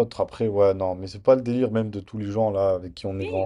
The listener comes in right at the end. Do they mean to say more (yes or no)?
no